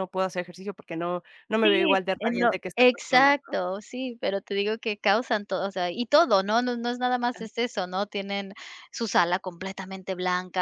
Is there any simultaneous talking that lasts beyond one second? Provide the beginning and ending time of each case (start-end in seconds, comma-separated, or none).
1.6-3.3